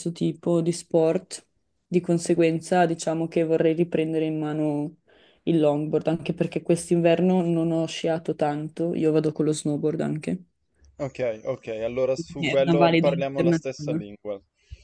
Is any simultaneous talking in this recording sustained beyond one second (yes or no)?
yes